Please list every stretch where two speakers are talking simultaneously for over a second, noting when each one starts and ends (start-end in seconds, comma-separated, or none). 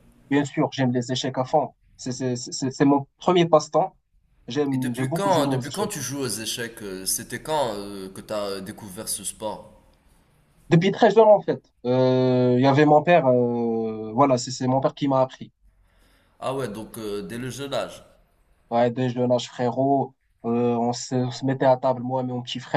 4.7-5.9